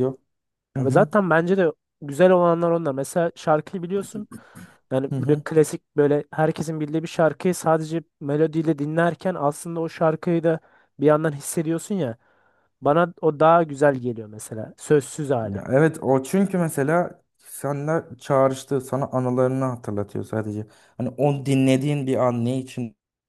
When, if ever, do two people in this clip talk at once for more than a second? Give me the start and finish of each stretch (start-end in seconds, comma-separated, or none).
none